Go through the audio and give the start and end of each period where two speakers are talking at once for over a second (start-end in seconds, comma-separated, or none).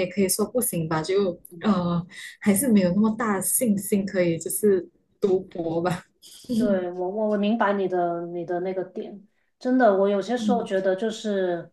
none